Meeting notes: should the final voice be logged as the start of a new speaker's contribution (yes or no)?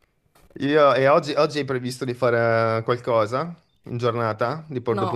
yes